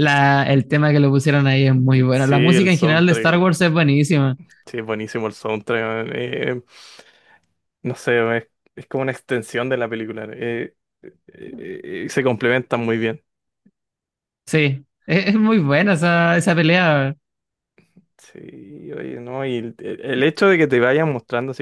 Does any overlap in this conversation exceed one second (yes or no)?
yes